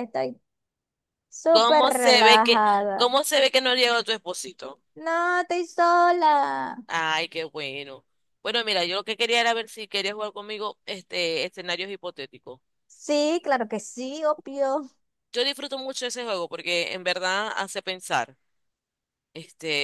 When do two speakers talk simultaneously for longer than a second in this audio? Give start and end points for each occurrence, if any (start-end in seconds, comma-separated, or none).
1.5-3.1